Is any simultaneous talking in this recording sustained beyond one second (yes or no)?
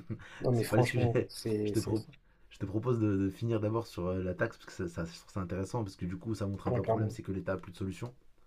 yes